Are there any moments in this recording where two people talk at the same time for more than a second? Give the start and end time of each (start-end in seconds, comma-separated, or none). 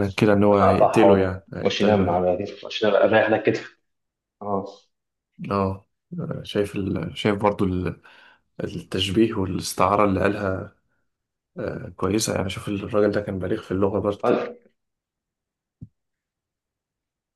0.5-2.2